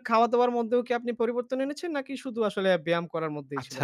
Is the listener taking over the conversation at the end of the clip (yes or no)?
yes